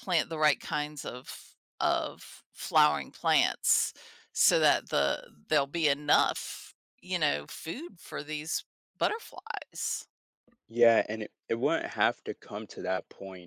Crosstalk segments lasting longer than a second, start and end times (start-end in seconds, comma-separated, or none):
none